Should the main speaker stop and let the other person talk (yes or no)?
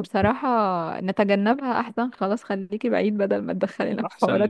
yes